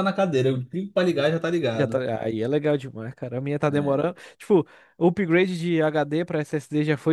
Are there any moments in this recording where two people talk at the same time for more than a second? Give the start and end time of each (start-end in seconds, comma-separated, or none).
none